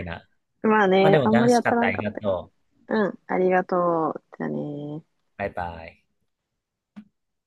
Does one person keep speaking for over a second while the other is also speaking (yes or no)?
yes